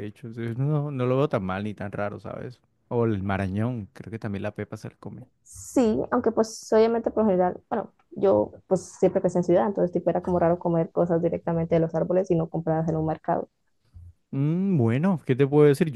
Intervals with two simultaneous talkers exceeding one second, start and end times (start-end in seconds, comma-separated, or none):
none